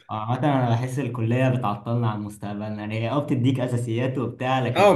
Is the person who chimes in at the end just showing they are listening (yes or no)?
no